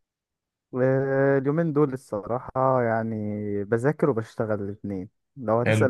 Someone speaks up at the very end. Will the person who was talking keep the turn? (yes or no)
yes